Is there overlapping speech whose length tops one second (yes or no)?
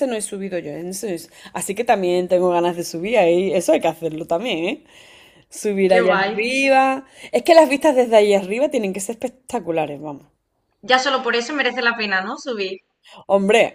no